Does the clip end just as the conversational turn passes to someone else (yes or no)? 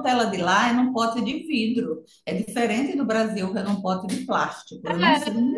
yes